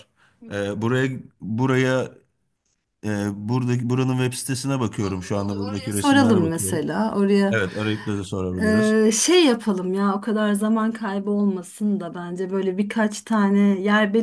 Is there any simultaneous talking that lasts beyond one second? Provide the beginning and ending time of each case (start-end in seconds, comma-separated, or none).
5.0-6.9